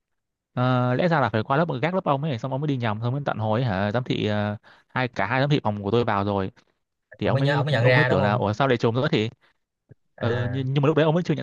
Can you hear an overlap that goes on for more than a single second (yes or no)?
yes